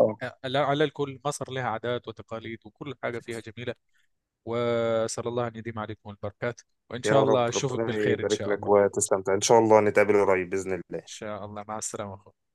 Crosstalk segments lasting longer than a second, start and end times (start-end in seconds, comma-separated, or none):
7.0-8.7